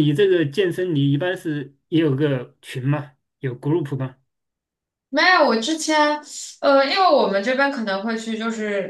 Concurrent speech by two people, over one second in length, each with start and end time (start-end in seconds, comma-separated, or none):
none